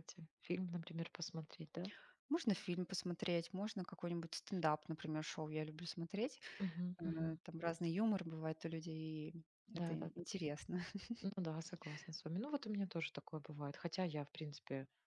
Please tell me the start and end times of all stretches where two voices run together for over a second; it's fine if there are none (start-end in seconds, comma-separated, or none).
none